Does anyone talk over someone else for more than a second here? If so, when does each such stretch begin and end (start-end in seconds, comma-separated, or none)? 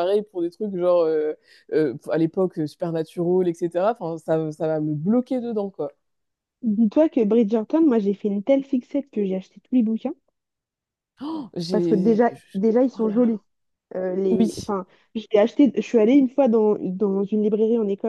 11.7-13.4